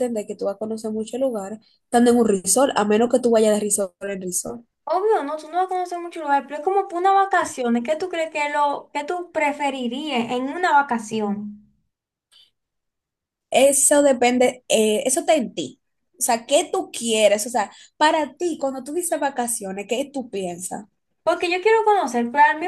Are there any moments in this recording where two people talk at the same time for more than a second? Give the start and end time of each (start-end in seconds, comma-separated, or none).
none